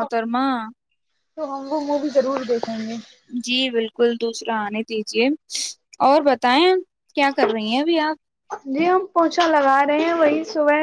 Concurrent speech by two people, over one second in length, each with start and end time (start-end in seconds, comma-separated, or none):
none